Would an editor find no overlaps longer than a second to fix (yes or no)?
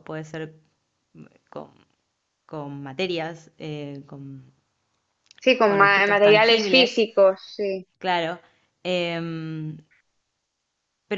no